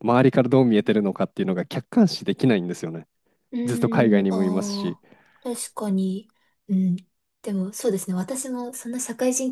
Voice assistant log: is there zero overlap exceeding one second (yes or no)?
no